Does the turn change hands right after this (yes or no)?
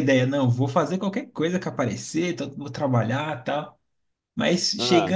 no